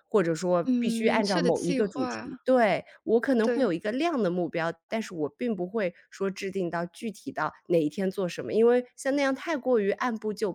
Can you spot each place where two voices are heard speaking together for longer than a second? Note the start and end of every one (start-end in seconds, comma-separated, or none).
0.6-2.3